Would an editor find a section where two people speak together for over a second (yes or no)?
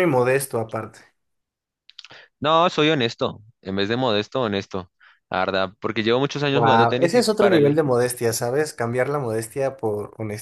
yes